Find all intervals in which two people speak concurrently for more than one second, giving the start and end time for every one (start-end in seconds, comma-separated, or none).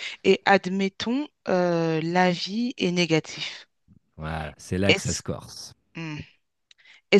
none